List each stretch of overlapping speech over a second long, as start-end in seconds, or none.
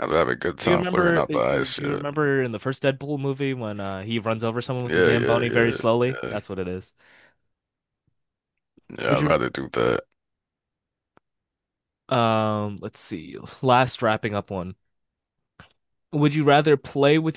0.6-2.0, 4.8-6.3